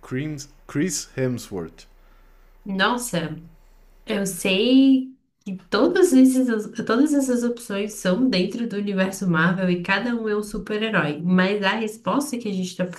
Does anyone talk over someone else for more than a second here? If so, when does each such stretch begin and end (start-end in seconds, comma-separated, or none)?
none